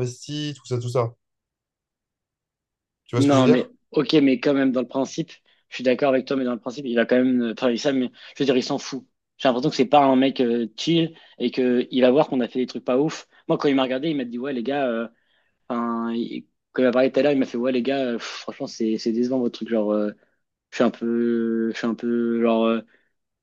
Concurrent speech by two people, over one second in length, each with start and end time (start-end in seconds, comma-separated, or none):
none